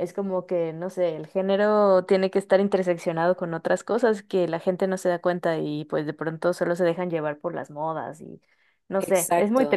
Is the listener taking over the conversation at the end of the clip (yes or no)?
yes